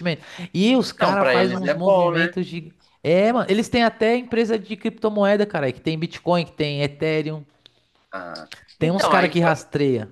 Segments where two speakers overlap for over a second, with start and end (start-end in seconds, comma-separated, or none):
1.0-2.3